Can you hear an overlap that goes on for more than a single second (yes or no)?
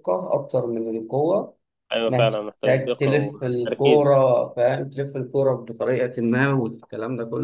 yes